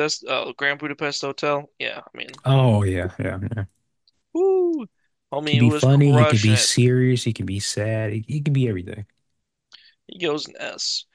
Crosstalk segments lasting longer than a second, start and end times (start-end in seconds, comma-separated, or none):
5.5-6.7